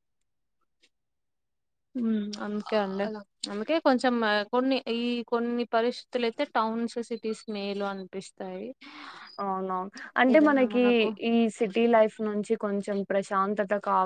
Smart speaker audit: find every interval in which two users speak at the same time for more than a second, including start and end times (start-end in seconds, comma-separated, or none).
none